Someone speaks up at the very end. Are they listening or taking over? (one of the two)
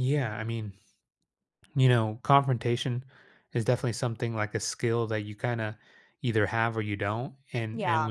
listening